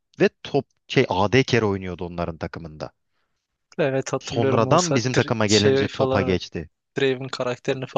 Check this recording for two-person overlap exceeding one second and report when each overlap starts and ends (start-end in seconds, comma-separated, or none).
4.2-6.4